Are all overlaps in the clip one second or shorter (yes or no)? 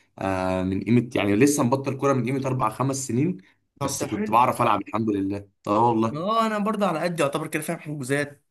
yes